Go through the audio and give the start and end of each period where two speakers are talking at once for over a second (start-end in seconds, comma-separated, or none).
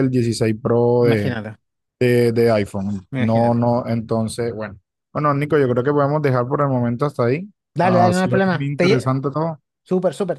7.7-9.1